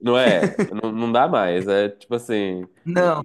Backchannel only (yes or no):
yes